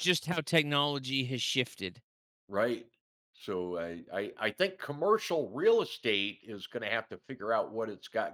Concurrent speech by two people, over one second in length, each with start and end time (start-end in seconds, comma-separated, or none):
none